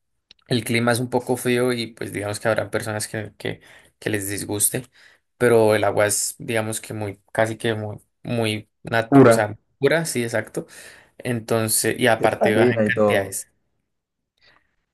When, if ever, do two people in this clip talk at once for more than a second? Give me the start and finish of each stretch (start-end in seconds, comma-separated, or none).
12.2-13.4